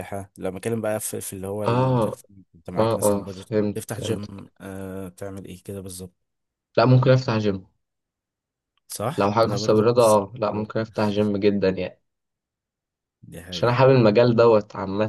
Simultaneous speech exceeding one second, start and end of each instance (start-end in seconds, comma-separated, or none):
2.8-4.4, 9.2-10.7